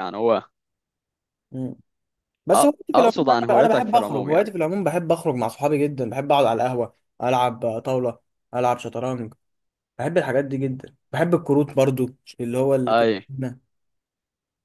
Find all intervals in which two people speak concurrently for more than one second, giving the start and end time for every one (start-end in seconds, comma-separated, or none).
2.6-4.5